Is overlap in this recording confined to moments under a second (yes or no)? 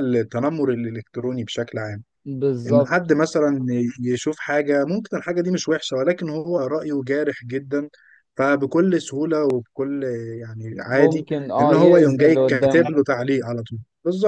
no